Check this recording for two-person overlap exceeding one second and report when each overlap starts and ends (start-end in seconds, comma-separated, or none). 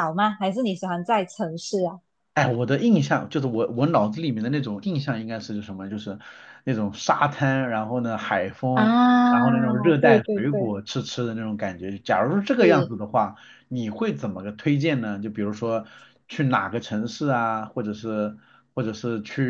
8.7-10.7